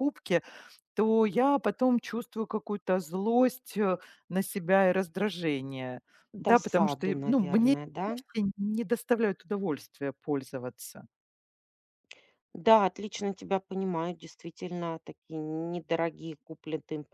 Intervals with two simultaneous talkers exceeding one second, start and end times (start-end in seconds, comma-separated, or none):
6.5-8.1